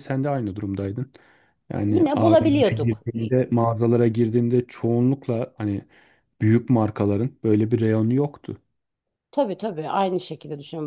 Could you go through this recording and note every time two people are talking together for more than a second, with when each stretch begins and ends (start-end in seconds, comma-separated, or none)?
1.8-3.4